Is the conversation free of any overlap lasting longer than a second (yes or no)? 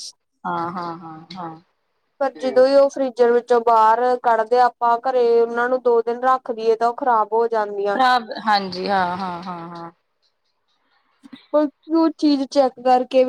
yes